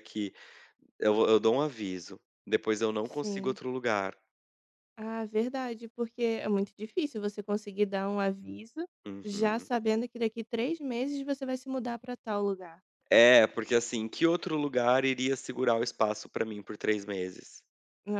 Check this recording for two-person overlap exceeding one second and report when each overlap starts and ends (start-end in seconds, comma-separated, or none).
none